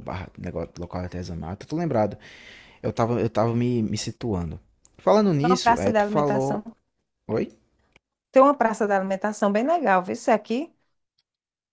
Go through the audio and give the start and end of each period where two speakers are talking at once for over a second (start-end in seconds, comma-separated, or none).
5.4-6.6